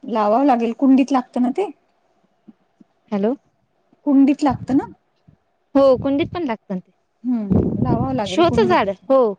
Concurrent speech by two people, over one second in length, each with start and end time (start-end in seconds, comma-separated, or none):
7.3-8.8